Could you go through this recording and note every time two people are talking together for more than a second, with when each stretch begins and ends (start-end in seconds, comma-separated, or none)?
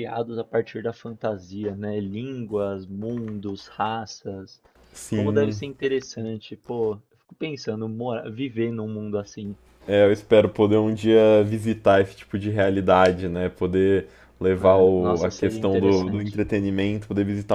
14.6-16.4